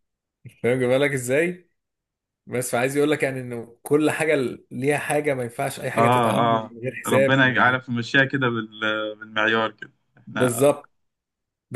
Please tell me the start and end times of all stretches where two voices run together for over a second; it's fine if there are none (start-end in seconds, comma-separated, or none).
5.9-7.8